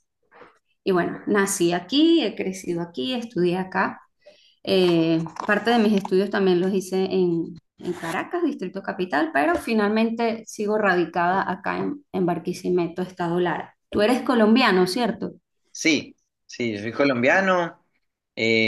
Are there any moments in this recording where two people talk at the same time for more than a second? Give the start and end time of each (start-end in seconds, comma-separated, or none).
none